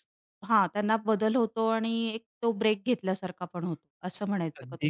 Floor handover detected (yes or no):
yes